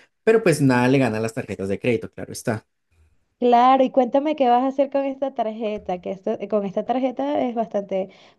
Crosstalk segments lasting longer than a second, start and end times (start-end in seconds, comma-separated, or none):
none